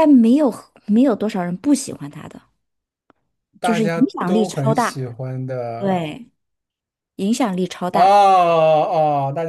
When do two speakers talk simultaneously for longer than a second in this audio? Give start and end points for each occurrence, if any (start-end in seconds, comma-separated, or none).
3.6-5.0